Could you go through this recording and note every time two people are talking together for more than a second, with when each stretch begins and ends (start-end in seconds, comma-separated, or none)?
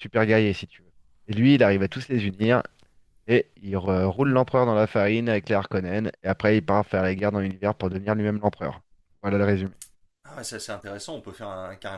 none